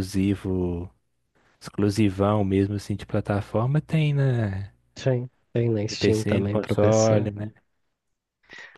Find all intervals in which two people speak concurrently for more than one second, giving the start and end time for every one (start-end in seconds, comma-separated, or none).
5.9-7.1